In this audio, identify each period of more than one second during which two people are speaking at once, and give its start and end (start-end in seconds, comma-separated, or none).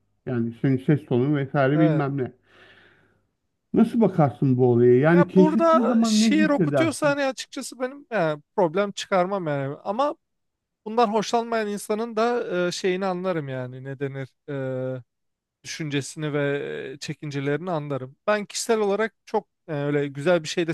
5.1-7.2